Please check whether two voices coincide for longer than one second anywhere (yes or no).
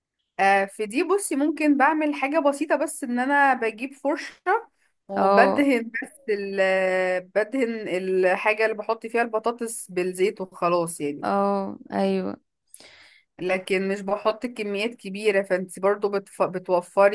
no